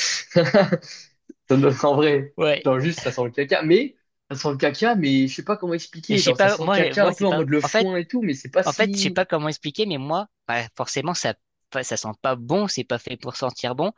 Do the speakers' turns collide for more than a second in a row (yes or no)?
yes